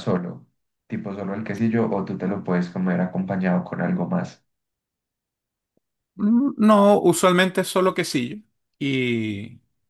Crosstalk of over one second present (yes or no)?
no